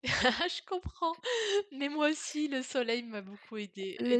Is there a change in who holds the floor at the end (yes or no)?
no